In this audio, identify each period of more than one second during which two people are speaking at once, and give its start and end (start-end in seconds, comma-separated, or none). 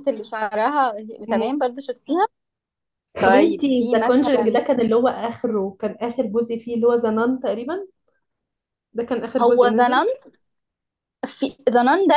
3.2-4.6